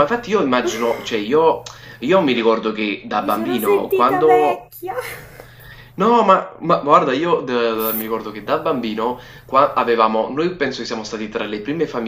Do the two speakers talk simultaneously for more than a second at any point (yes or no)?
yes